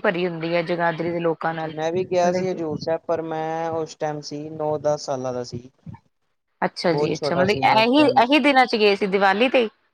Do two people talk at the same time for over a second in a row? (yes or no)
yes